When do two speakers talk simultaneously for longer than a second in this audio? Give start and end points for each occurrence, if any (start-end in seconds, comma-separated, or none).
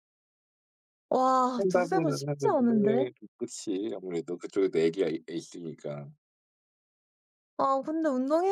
1.6-3.1